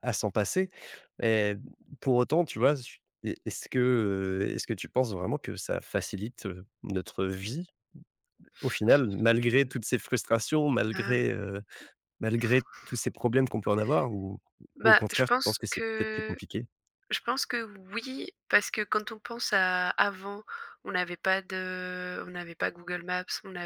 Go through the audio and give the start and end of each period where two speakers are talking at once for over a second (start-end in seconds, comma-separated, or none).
14.8-16.4